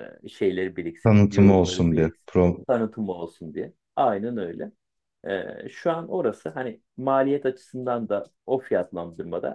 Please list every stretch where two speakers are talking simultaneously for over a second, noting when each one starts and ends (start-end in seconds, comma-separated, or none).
1.0-2.6